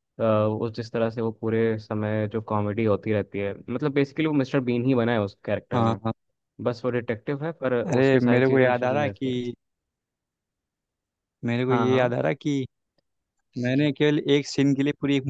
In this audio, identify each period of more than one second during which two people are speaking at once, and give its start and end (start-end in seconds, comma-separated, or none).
7.9-9.4